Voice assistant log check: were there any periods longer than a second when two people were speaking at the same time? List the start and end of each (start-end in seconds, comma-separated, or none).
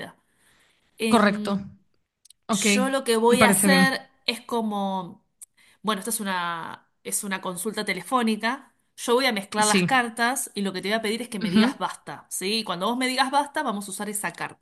none